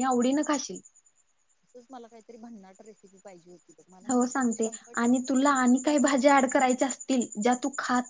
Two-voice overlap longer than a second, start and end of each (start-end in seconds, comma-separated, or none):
4.1-6.6